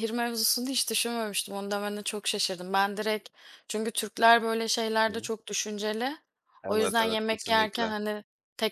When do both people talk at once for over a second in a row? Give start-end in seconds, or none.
6.7-7.9